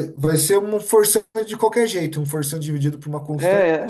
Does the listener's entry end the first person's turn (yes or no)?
yes